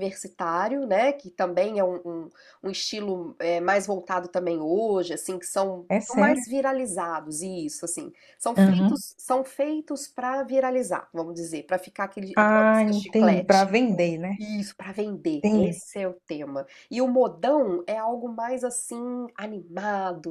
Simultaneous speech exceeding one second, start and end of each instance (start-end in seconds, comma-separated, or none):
12.3-13.8